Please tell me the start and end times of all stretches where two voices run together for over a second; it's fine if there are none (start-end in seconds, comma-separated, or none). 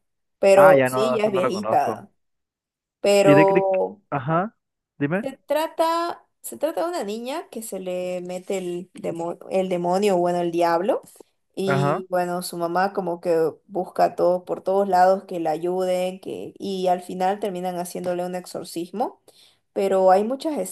0.6-2.1